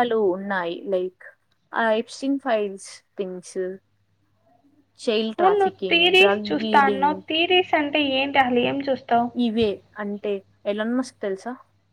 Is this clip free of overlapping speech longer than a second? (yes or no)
no